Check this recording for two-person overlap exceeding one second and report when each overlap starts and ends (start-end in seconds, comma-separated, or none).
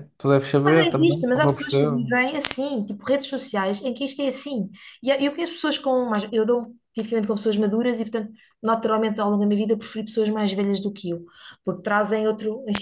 0.7-2.1